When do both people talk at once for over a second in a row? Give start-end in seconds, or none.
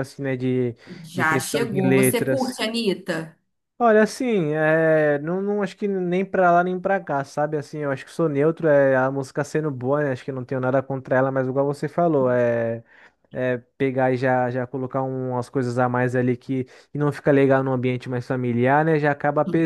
1.1-2.6